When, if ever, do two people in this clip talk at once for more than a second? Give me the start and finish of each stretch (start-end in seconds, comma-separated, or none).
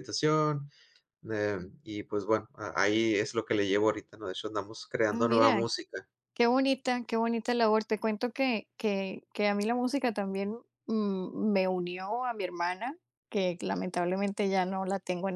none